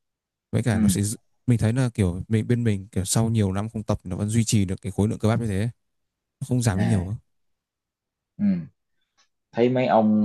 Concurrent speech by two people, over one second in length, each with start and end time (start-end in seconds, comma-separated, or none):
none